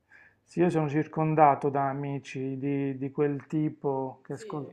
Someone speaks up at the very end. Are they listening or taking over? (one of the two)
listening